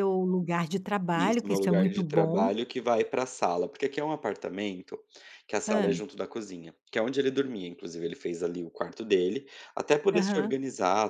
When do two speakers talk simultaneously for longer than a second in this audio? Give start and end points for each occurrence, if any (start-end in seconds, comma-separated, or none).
1.1-2.5